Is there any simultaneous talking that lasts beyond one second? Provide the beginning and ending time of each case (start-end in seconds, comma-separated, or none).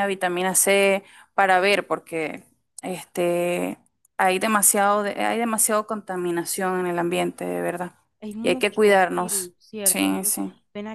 8.4-10.4